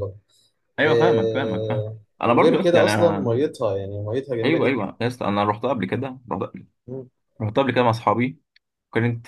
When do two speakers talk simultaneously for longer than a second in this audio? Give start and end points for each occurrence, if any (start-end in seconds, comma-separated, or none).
0.9-3.4